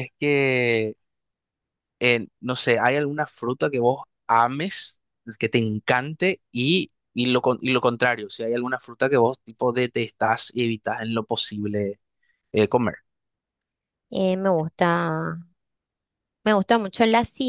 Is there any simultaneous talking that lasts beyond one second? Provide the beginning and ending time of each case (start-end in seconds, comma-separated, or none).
none